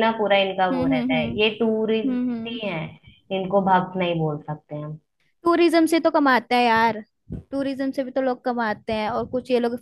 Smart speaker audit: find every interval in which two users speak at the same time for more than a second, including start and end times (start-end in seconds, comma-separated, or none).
0.7-2.6